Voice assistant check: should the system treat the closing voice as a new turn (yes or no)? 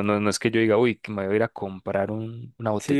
yes